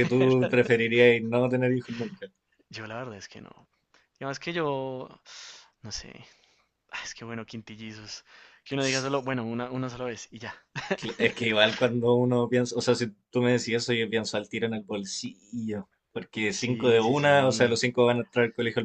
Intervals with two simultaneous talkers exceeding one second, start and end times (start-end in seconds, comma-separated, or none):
16.6-17.8